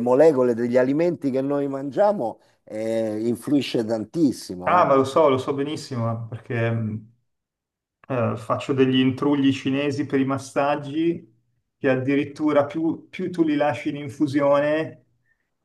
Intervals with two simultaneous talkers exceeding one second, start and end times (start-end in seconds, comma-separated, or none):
none